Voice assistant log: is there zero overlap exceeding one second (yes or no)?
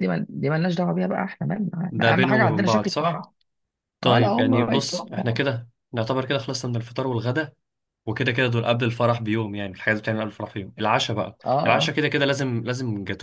no